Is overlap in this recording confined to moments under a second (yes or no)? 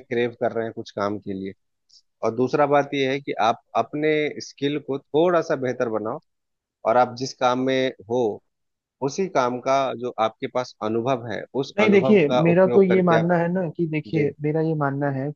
no